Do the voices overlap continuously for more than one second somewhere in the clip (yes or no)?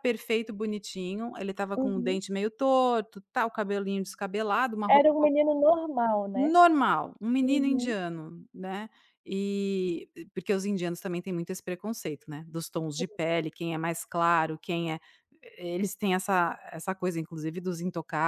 no